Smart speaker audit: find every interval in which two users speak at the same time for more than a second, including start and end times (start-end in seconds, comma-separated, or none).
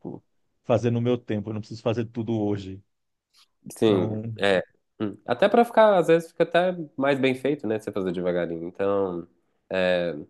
none